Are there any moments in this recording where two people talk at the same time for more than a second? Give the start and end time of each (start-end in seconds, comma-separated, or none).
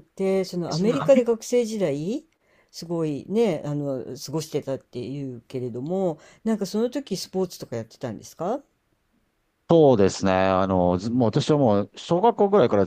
none